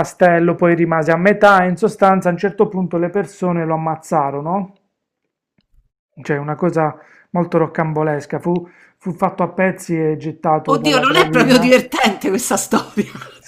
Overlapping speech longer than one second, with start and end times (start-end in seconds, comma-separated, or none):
10.6-11.9